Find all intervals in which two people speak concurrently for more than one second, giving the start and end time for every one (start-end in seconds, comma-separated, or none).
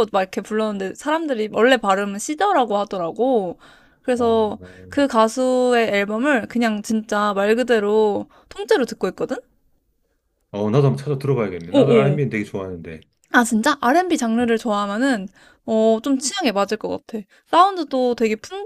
none